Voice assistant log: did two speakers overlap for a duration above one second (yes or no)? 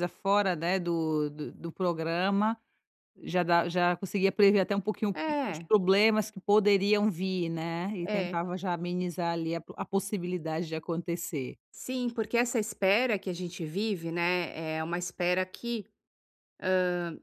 no